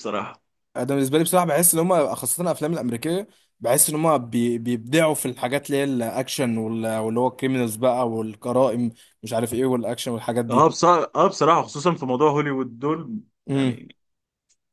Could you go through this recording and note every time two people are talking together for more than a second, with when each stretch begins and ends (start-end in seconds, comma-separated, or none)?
none